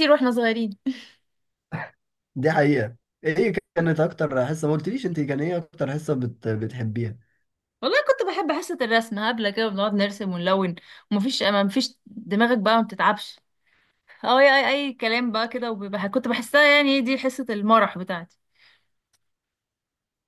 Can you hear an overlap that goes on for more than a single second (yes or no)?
no